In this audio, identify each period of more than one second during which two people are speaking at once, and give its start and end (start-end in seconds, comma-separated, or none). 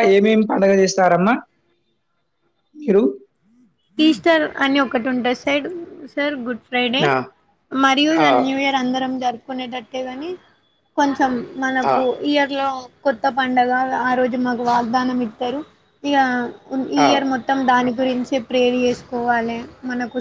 none